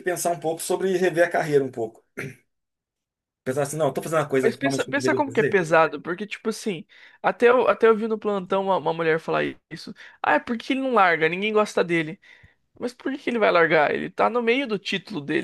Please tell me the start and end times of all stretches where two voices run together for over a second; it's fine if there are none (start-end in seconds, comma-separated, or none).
4.4-5.6